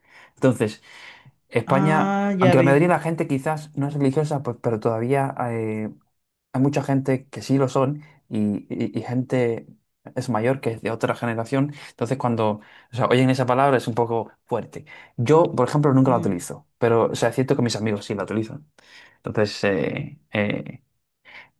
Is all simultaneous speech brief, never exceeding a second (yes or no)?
no